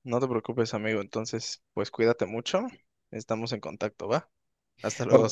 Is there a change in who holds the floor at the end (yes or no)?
yes